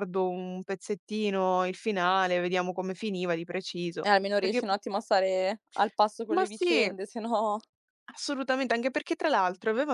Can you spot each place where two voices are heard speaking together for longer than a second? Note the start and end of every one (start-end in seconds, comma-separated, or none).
none